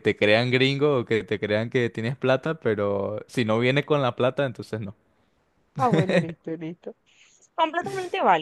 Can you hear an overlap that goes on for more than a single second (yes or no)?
no